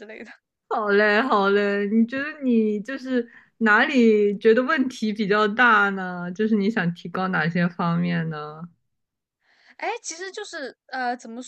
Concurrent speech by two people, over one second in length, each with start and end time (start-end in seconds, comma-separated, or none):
none